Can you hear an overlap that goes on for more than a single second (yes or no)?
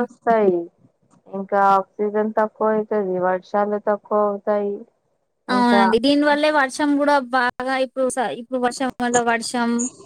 no